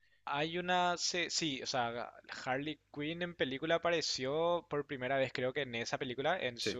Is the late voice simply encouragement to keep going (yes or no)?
yes